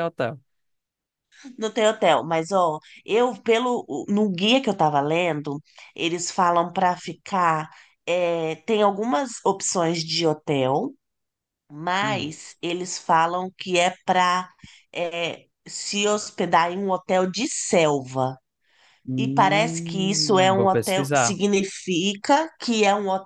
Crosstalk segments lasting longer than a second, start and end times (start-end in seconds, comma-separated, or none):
19.2-21.4